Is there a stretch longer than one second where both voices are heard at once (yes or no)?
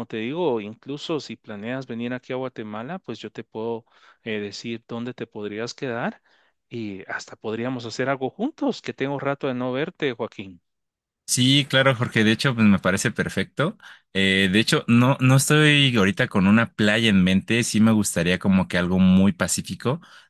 no